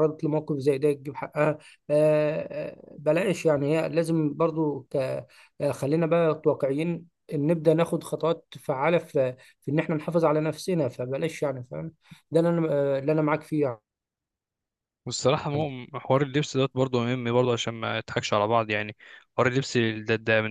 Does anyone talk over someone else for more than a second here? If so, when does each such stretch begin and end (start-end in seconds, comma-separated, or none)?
none